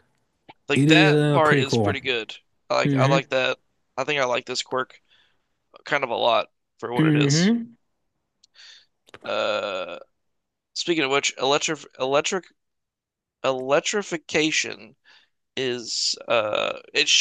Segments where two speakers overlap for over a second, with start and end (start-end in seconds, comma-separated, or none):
0.7-1.9